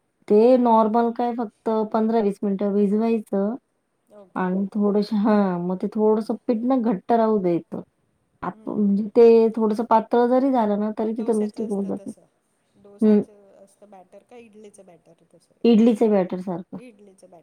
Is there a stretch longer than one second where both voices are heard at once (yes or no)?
yes